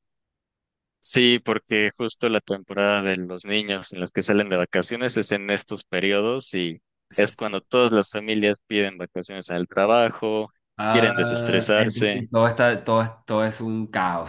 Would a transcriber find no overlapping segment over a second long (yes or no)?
no